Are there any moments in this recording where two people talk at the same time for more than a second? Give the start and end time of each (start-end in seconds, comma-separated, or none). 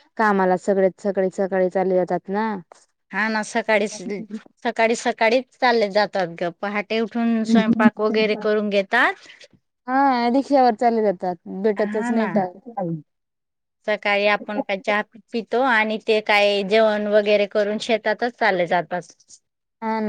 none